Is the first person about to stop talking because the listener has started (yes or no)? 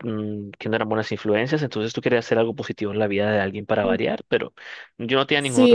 yes